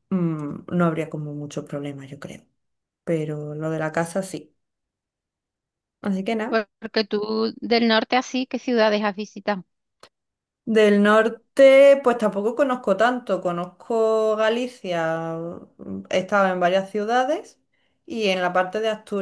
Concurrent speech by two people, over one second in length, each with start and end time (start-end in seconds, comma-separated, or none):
none